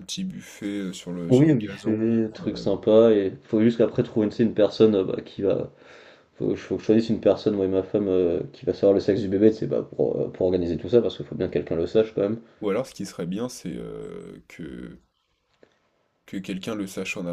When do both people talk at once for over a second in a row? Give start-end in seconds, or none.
1.3-2.7